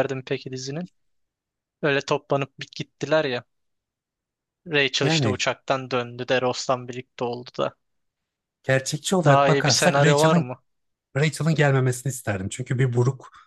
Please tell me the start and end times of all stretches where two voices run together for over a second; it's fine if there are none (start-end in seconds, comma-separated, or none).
9.2-10.5